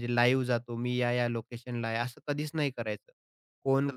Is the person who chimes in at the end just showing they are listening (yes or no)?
yes